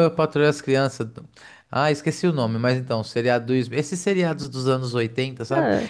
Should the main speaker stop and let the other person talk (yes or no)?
no